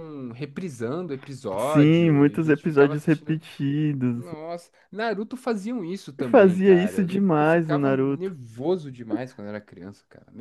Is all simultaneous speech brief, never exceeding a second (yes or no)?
no